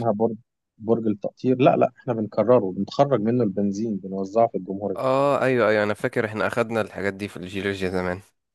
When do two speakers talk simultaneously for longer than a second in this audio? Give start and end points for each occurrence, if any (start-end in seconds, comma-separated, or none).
none